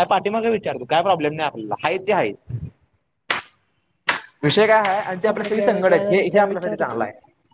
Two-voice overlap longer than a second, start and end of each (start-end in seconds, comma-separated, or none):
5.3-7.0